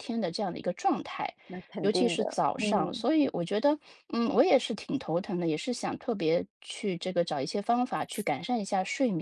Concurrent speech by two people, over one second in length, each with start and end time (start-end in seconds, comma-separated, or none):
1.8-3.0